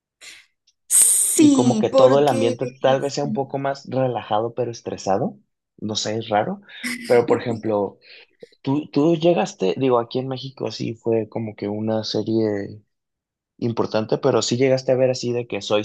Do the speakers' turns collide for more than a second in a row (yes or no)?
yes